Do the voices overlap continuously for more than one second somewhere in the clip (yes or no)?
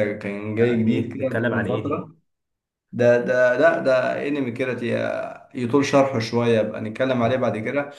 yes